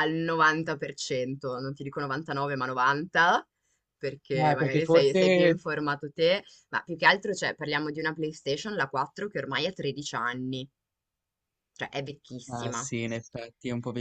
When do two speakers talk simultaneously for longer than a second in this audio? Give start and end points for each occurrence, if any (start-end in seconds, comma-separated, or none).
4.4-5.6